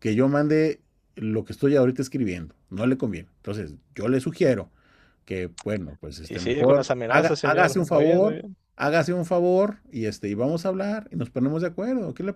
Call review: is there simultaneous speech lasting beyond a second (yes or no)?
yes